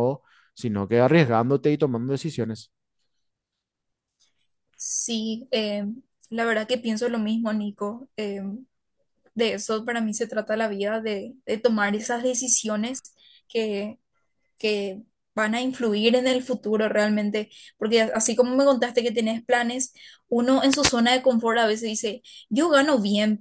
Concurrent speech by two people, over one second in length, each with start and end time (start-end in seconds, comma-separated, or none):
none